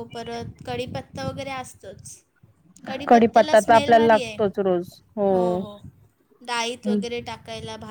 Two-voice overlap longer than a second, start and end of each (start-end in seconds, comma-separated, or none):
3.1-4.3